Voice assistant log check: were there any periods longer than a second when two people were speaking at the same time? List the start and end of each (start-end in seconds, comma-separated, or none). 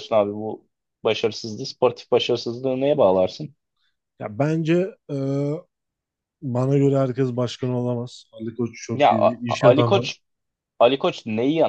8.9-10.1